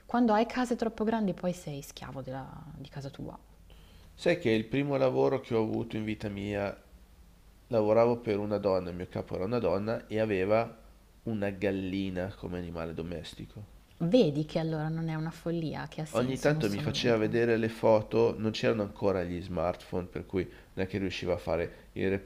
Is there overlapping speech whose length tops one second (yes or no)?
yes